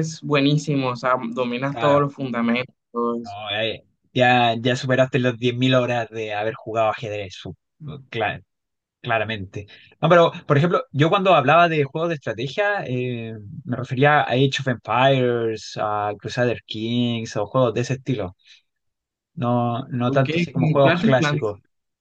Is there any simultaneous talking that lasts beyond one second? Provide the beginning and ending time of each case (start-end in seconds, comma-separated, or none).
20.1-21.4